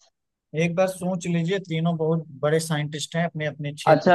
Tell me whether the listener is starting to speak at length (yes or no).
yes